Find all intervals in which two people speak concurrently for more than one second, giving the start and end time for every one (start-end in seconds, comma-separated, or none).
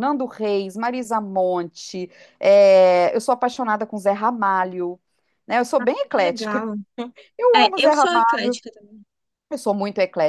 none